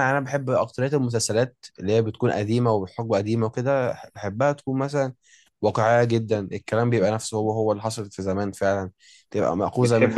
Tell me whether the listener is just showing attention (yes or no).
no